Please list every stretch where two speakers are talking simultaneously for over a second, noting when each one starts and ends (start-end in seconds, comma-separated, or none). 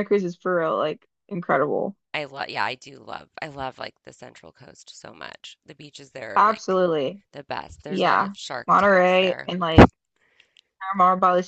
7.9-9.5